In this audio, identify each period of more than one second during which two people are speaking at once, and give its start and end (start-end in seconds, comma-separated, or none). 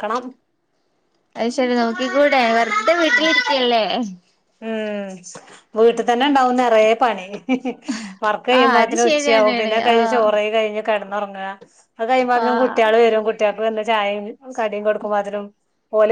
8.6-10.2